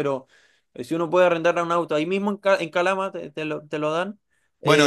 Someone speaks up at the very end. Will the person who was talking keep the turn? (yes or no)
no